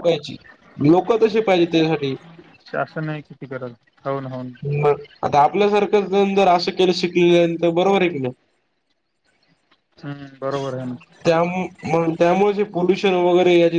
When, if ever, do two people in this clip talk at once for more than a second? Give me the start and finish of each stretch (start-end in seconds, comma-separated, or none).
none